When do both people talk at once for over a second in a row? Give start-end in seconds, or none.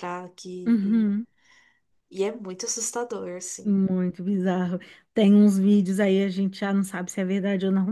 none